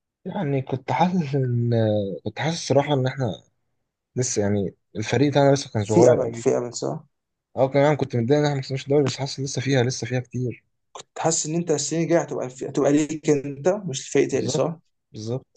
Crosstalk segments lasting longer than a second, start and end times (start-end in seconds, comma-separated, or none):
none